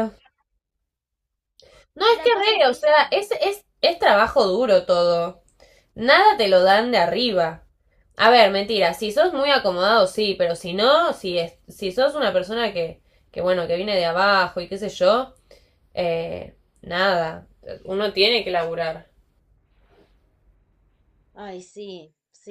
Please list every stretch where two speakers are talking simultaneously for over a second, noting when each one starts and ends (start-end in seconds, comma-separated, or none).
2.1-3.3